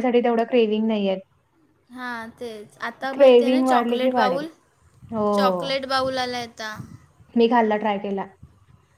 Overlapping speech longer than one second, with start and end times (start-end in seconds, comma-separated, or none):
3.1-4.4